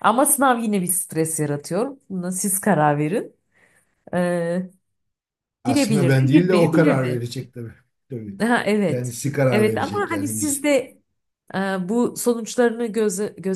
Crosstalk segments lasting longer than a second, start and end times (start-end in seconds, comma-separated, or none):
5.7-7.2, 8.9-10.6